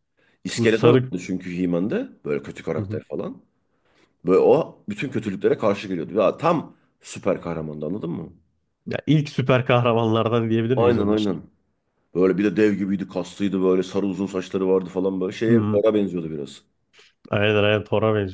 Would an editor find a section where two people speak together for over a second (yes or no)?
no